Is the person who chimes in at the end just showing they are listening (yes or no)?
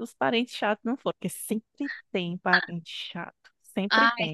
no